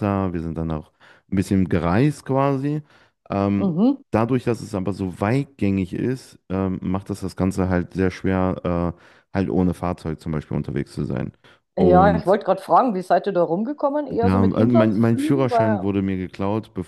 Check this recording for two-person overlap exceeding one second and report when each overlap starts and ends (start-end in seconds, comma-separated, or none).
14.2-15.8